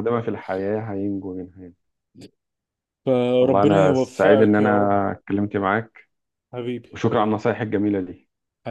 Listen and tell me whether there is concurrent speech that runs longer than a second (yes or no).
yes